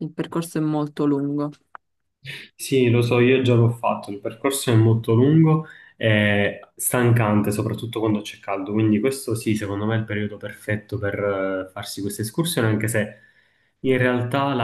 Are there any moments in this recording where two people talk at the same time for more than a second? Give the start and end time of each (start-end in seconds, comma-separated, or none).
none